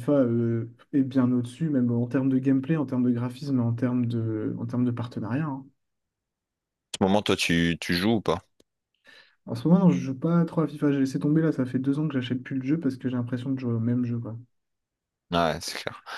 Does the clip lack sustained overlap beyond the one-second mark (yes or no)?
yes